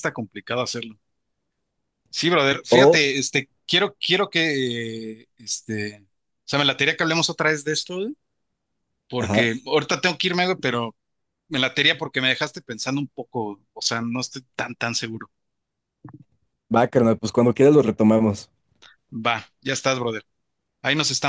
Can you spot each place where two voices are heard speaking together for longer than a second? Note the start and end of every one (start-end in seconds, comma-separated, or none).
none